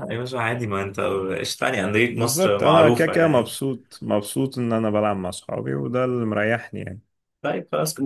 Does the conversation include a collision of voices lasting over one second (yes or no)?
yes